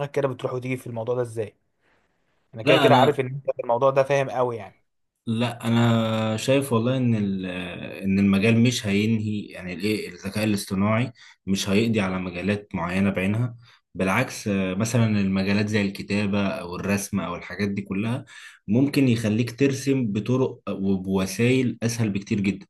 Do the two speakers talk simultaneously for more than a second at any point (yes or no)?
no